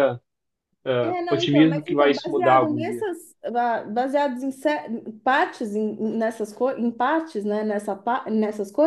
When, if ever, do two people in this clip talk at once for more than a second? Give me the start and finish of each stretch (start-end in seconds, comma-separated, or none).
1.0-3.1